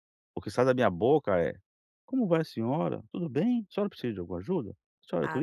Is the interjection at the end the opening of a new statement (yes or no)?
no